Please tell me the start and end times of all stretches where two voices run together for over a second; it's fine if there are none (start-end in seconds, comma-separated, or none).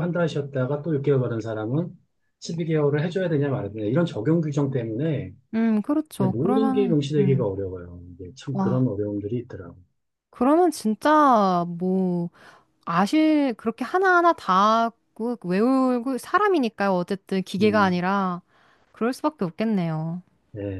6.2-7.5